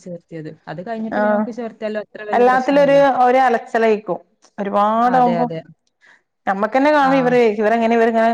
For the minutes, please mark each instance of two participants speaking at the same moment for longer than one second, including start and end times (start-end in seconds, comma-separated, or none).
none